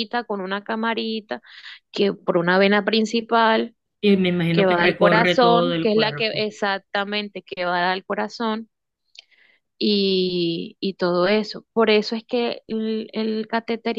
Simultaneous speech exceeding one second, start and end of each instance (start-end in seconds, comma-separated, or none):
4.5-6.5